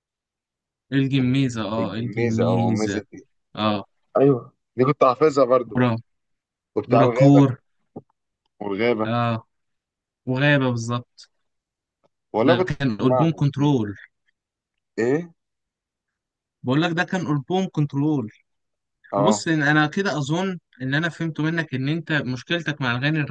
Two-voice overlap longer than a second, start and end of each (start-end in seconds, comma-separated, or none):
1.8-3.0, 12.4-13.8